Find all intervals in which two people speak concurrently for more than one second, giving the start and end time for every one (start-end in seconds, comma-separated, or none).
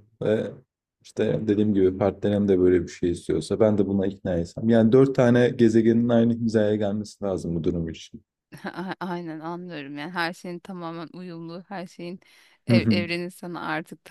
none